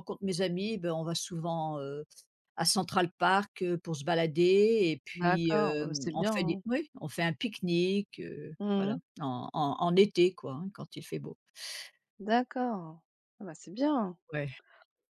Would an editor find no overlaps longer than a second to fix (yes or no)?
no